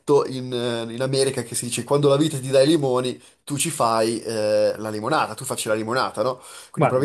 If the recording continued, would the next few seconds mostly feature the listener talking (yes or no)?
no